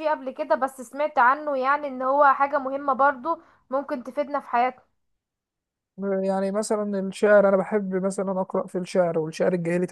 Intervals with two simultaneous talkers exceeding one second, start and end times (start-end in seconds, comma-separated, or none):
none